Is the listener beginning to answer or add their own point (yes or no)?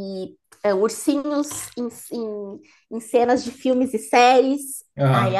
no